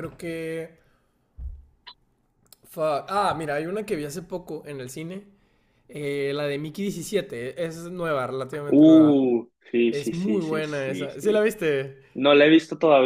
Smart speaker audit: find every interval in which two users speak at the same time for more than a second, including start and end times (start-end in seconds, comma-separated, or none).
9.9-11.5